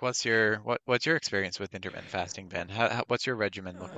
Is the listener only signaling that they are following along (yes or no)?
no